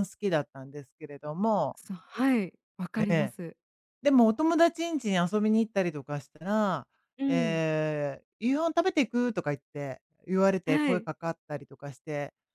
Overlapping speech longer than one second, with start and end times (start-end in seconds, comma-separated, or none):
none